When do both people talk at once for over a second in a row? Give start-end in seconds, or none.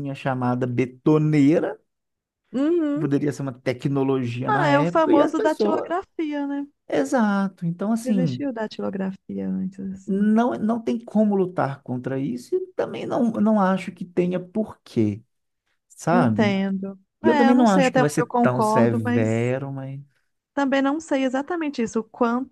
4.5-5.9, 17.2-19.5